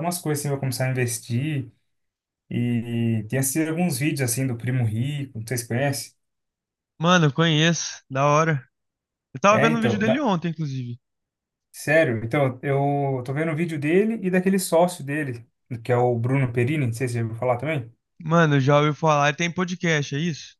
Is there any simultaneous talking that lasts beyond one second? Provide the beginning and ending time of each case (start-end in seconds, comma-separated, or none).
none